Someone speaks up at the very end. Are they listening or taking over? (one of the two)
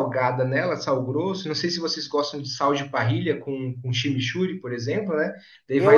taking over